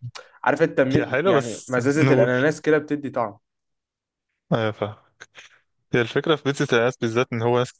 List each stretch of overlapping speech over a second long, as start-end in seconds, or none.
1.0-2.3